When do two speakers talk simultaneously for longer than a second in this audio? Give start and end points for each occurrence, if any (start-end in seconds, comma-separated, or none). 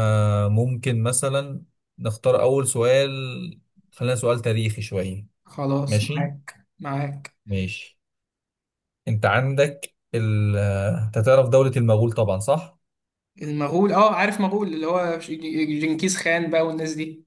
none